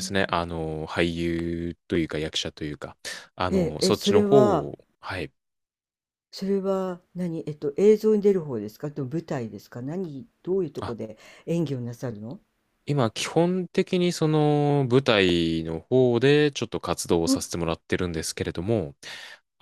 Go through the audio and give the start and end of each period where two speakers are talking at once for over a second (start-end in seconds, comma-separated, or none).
3.5-4.7